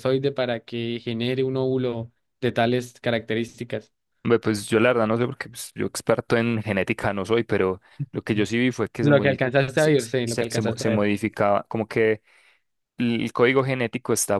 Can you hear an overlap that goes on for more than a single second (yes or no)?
yes